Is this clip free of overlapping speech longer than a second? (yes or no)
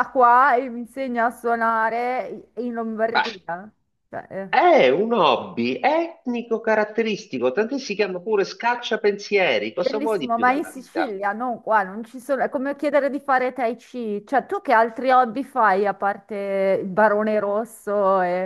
no